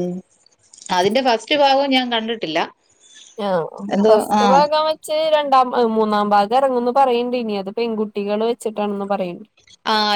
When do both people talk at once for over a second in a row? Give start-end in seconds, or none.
none